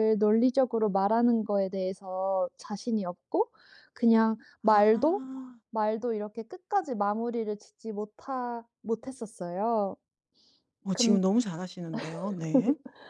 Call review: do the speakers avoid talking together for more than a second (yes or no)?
yes